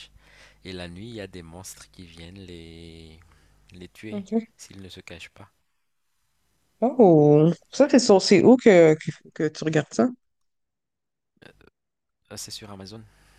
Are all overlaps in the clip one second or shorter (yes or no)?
yes